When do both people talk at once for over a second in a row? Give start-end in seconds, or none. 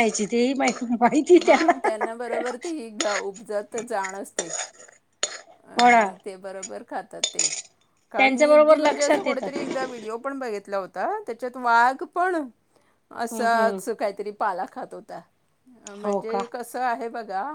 8.2-9.5